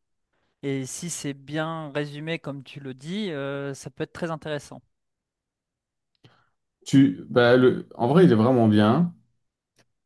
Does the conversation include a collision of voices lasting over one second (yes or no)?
no